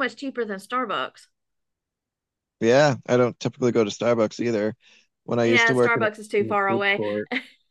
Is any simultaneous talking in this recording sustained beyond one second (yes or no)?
yes